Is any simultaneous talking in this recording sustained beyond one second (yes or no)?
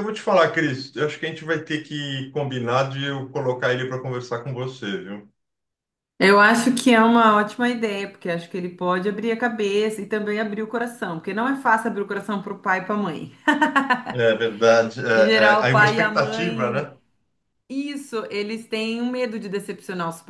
yes